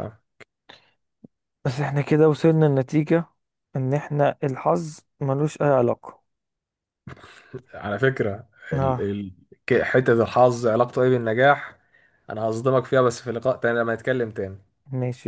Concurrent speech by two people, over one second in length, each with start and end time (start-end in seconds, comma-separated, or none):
none